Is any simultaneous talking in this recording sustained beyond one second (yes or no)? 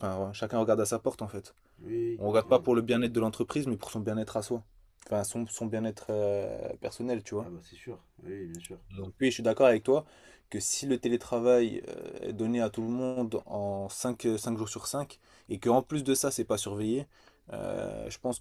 no